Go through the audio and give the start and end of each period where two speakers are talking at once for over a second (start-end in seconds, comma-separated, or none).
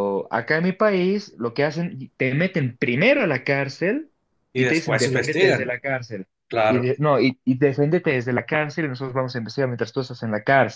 4.6-5.8